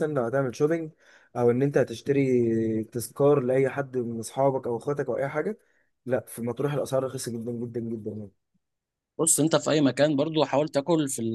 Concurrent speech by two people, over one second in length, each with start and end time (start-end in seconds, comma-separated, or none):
none